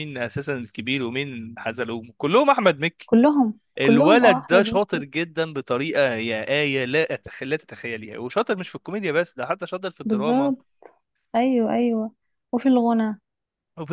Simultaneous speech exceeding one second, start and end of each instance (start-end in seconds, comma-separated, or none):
3.8-5.1